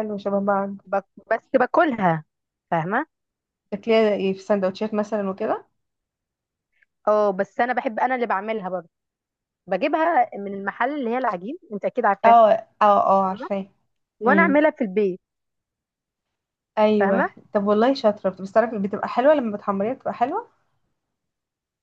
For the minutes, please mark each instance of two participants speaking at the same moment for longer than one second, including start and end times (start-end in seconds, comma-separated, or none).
none